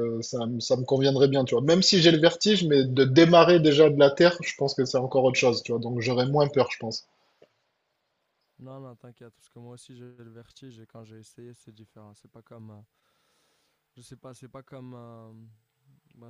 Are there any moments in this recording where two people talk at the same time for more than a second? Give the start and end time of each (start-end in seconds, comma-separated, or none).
none